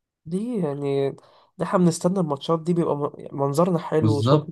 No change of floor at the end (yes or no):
no